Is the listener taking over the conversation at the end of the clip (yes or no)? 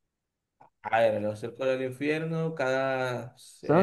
no